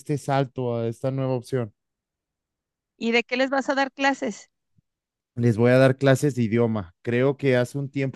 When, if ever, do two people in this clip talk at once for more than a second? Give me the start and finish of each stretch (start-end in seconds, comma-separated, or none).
none